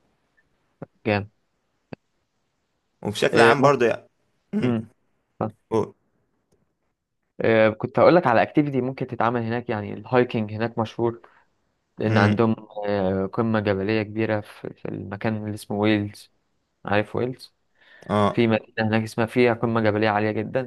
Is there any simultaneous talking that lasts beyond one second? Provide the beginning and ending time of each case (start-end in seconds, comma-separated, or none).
none